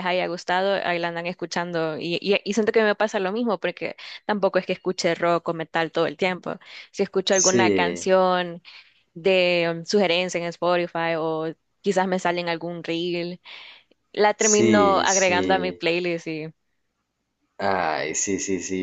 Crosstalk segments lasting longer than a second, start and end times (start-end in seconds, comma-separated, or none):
14.3-15.8